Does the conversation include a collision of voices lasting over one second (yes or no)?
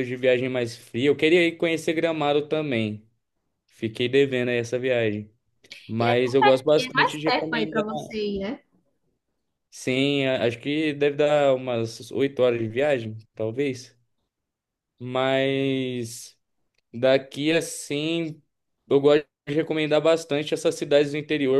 yes